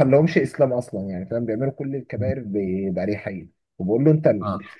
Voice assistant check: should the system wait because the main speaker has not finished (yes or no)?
yes